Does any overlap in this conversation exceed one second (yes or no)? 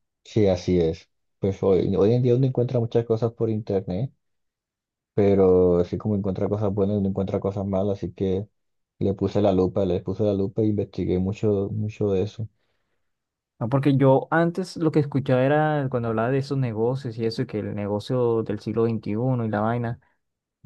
no